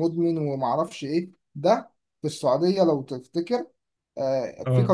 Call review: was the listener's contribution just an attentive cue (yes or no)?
yes